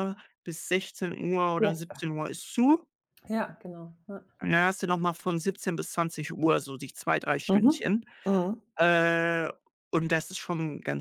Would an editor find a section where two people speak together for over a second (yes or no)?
no